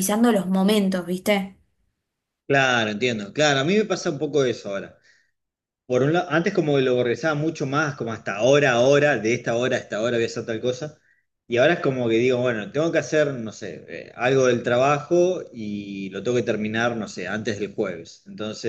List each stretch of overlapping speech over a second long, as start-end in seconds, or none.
none